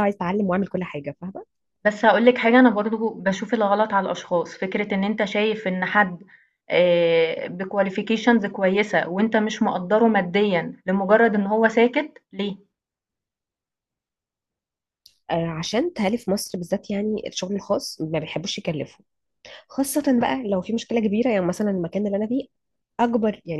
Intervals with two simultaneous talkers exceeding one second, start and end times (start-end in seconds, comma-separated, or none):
none